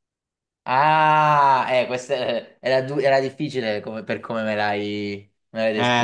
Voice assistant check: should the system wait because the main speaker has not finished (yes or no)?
no